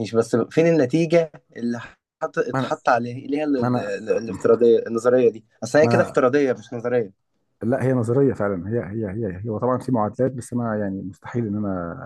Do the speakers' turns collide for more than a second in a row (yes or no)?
no